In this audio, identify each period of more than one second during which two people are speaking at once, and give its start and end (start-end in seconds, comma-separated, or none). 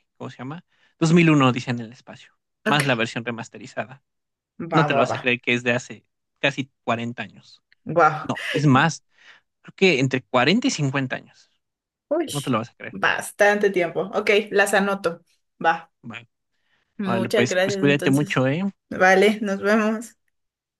17.0-18.4